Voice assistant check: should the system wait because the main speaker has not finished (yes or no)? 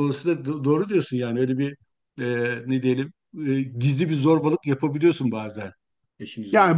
no